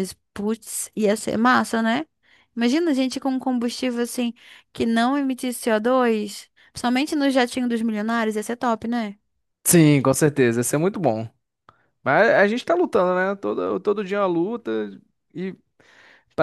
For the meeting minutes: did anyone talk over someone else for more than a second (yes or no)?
no